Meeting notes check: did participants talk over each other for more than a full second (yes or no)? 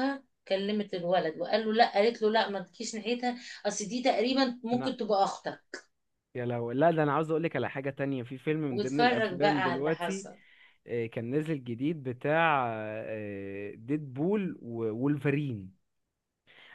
yes